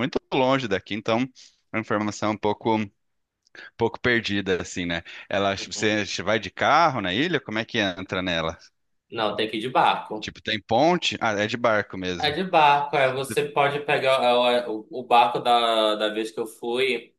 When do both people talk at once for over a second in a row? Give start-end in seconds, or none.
none